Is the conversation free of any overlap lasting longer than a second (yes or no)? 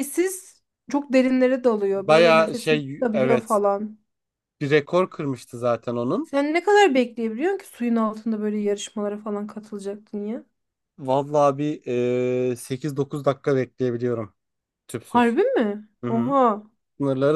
no